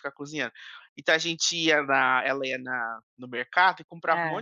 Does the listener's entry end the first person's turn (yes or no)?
no